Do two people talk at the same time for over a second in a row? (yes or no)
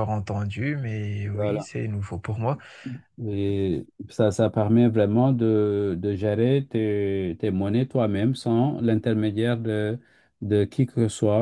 no